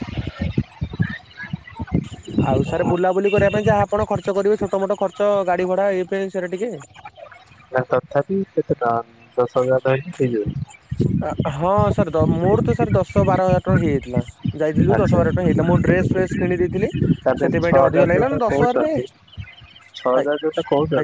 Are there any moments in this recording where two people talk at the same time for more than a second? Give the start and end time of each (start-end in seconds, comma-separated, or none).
17.4-19.0